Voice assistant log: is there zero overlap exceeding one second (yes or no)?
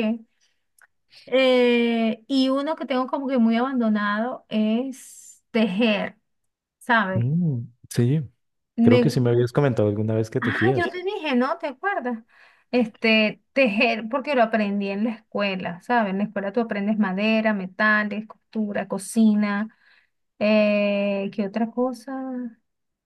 yes